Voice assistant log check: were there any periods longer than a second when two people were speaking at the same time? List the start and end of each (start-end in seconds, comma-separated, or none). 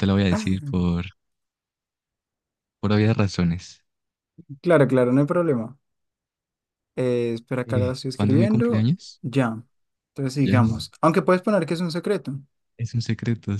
7.7-9.2